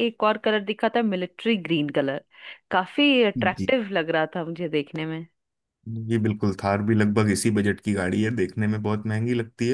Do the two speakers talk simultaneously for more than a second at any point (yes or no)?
no